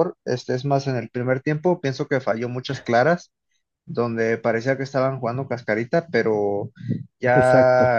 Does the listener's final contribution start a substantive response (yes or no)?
no